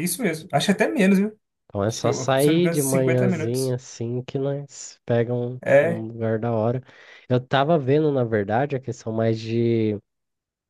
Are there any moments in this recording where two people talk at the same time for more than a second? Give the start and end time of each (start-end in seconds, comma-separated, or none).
1.9-3.8